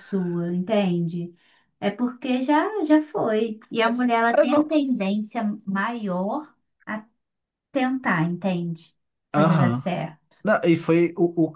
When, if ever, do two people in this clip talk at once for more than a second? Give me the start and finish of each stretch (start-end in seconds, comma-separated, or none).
none